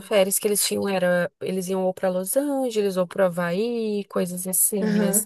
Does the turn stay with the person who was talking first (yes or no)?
yes